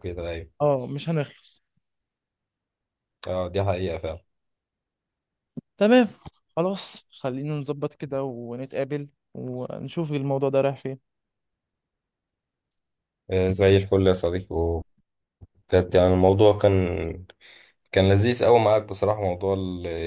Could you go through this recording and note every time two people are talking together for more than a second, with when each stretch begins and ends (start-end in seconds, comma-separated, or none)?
none